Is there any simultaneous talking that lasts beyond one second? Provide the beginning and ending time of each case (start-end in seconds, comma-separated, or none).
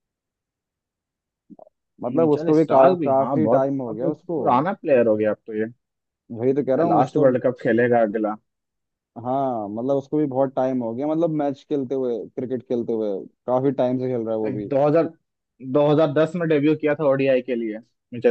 2.2-4.4